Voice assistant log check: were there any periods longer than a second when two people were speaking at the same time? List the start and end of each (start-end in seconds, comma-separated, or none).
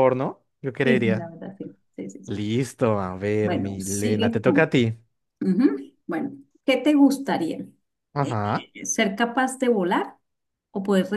3.4-4.7